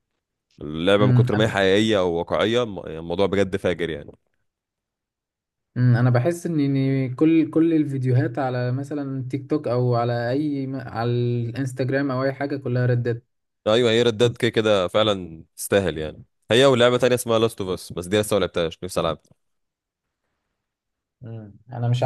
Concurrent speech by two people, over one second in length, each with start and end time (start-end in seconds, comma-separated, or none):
none